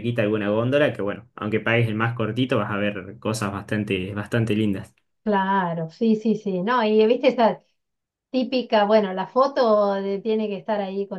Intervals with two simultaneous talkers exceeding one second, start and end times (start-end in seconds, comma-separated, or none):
none